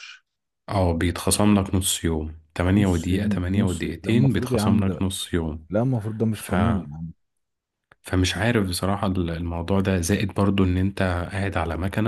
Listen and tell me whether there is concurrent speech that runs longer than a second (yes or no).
yes